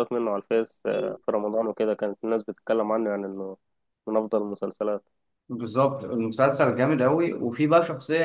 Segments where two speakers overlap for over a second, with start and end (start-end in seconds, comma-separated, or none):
none